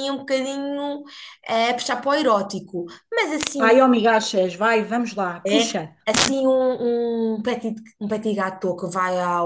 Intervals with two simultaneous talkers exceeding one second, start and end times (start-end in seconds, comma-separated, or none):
none